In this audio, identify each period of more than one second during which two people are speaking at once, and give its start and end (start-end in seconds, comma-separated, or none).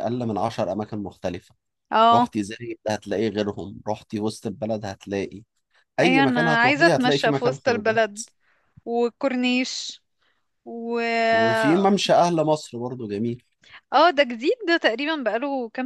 6.0-8.0